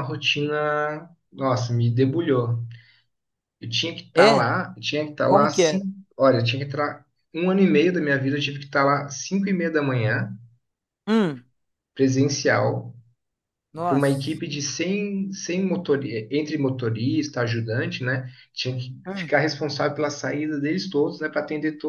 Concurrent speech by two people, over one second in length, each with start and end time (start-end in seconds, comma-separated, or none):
none